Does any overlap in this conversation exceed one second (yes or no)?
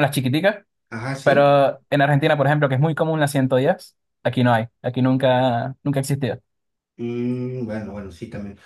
no